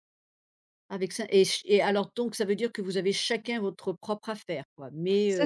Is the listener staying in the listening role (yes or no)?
no